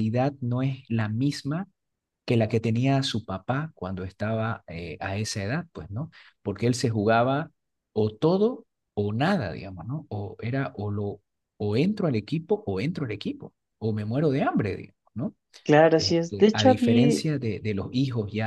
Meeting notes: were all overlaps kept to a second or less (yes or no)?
no